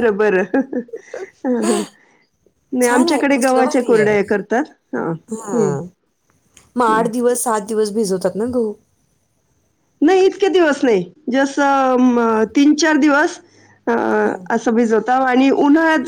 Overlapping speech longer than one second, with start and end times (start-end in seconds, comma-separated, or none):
2.9-4.1